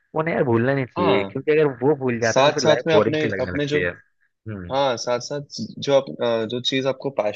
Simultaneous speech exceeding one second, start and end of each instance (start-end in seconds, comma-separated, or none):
2.2-3.8